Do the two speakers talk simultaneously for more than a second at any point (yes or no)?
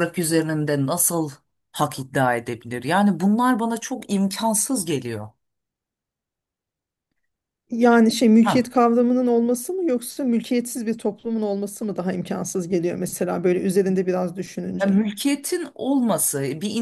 no